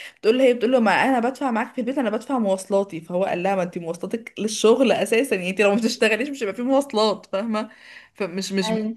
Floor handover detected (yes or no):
no